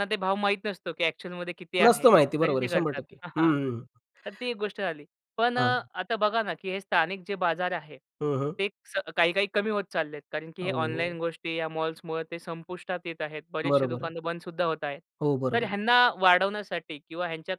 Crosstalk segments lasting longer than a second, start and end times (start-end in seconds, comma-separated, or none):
1.8-3.5